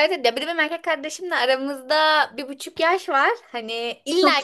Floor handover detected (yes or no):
no